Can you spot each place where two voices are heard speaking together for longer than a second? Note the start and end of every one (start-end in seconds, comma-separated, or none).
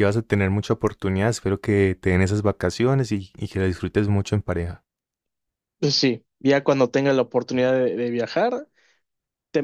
none